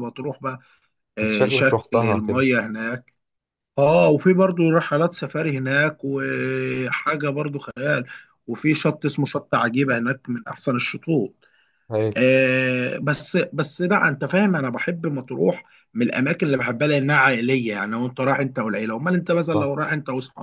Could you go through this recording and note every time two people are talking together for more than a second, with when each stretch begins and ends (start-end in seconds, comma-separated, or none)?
1.2-2.4